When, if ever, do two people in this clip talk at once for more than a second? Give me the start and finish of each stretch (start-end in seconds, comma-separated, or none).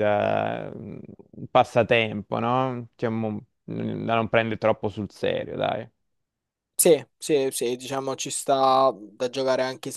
none